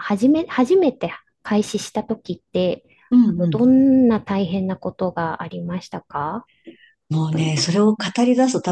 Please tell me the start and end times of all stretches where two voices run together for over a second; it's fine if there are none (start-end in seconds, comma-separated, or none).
none